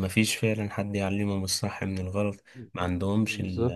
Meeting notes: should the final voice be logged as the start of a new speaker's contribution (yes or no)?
no